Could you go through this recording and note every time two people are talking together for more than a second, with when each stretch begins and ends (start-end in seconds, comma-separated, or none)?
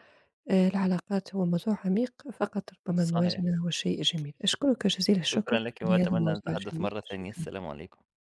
5.2-7.5